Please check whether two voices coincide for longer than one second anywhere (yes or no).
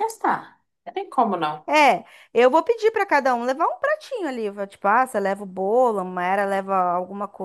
no